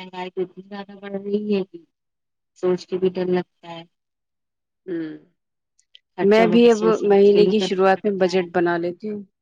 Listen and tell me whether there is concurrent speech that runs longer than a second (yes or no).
yes